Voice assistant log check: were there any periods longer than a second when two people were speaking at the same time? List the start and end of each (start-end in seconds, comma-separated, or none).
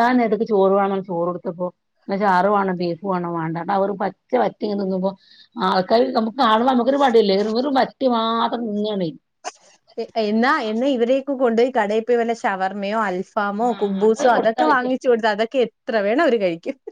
13.7-15.2